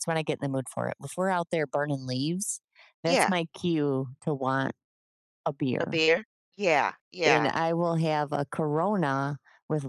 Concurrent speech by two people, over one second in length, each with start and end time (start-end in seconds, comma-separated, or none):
none